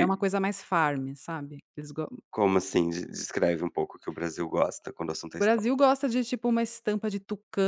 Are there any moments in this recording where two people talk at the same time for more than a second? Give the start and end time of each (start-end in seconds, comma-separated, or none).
none